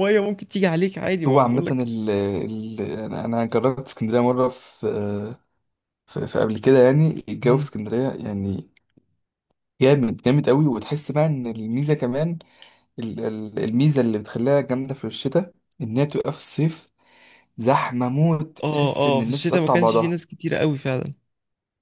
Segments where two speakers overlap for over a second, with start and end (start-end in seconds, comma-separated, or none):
18.6-20.2